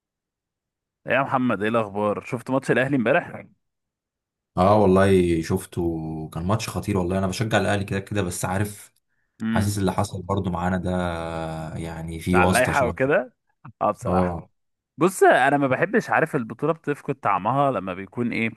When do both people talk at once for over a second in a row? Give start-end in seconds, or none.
none